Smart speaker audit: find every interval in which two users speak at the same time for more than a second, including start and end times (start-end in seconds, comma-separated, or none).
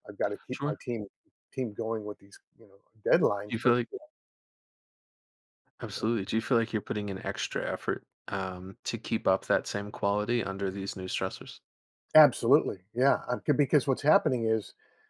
none